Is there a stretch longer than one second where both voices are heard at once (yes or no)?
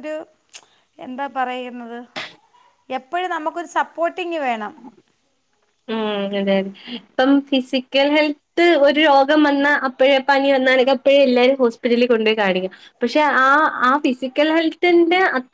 no